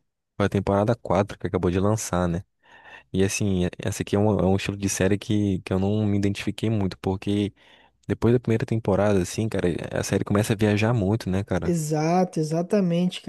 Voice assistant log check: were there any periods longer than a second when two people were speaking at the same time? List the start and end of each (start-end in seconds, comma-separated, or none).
none